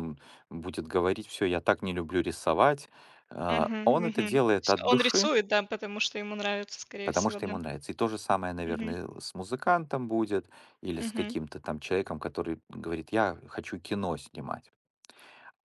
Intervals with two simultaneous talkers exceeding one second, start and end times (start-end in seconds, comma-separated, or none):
3.5-5.3